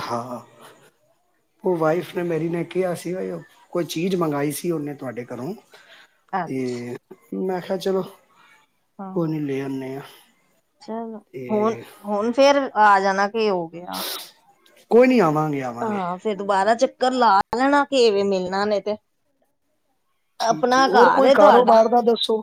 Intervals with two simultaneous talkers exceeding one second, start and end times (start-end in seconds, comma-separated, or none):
20.5-21.8